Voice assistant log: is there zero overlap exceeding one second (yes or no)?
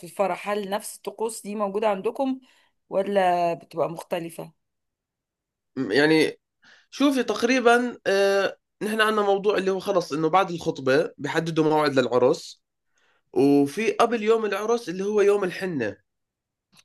yes